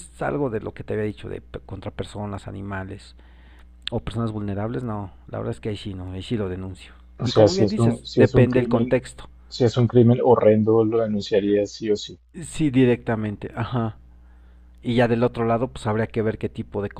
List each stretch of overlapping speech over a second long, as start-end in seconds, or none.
7.2-9.0